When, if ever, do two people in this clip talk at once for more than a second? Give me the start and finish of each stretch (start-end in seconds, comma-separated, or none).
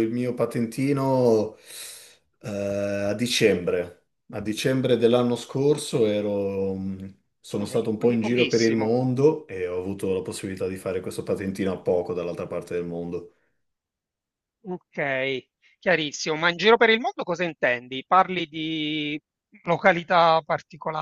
7.6-8.9